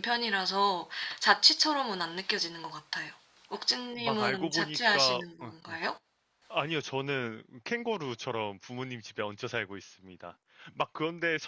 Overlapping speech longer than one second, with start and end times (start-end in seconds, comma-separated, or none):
4.0-5.5